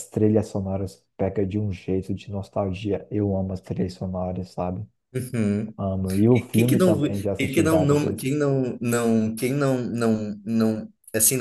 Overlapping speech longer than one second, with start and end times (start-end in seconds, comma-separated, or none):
6.3-8.3